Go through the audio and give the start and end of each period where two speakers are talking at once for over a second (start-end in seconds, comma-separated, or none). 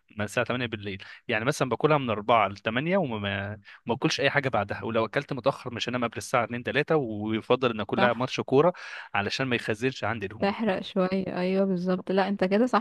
none